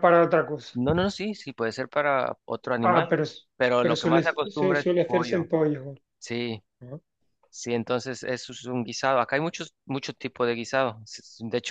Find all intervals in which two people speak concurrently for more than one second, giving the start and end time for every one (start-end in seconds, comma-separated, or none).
3.8-5.5